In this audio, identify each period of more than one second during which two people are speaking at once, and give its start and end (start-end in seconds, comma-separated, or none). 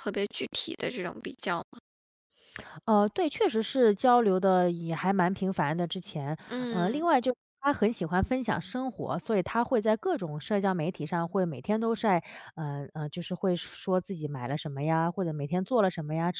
none